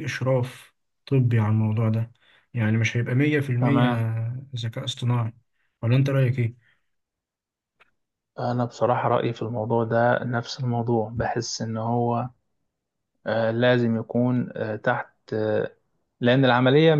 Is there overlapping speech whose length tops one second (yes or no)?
no